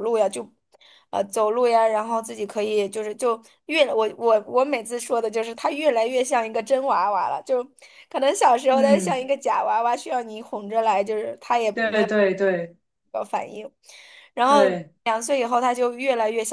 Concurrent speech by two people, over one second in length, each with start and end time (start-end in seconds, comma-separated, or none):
none